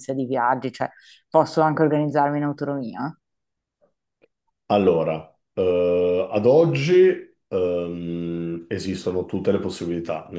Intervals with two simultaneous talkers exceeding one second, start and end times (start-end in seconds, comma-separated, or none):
none